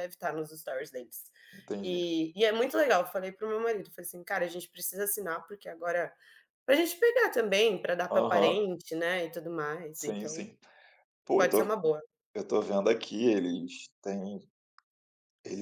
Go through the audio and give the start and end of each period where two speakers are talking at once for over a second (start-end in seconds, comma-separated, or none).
none